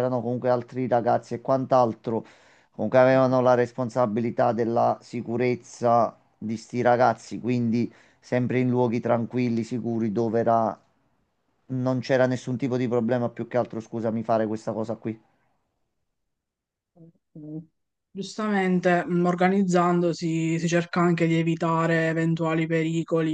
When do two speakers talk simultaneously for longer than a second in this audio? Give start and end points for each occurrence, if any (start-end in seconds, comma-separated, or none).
none